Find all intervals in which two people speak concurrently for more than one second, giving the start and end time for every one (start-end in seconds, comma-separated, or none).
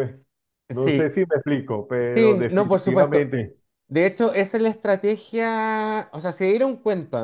2.1-3.3